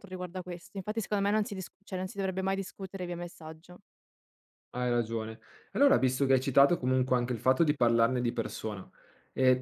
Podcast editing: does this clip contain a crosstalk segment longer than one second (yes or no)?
no